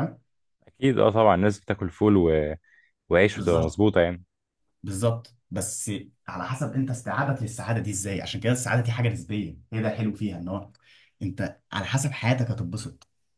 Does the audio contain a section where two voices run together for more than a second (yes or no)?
no